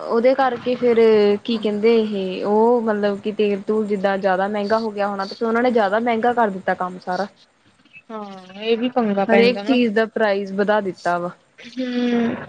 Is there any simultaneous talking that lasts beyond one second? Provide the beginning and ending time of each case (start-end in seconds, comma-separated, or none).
none